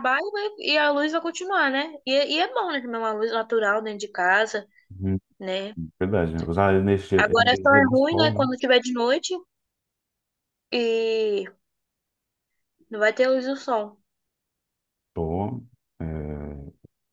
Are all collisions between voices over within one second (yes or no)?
no